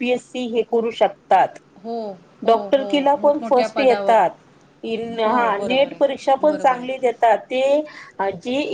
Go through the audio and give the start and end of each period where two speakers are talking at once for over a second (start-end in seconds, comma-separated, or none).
2.5-4.2, 5.3-7.1